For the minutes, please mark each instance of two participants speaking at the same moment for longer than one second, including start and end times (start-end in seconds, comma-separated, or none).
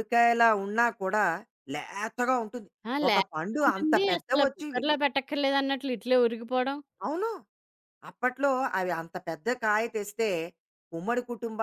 3.1-4.8